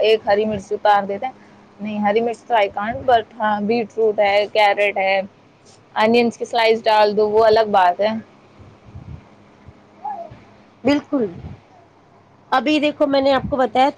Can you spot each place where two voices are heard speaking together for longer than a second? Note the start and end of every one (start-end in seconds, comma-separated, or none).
none